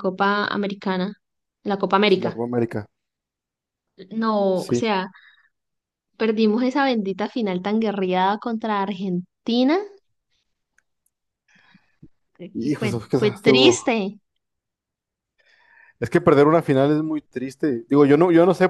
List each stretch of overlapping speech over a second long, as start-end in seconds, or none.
12.6-13.8